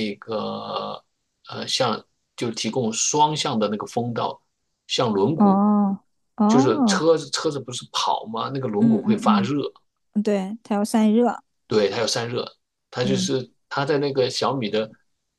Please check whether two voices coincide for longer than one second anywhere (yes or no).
no